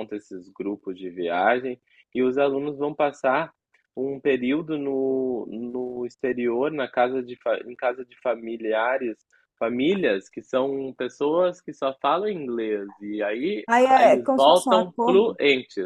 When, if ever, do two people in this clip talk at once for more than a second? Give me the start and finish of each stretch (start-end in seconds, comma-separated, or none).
13.7-15.4